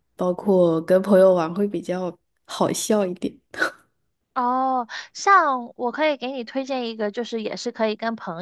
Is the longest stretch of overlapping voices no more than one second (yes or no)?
yes